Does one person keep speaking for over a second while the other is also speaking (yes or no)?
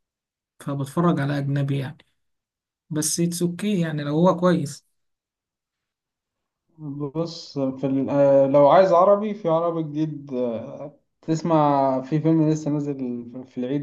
no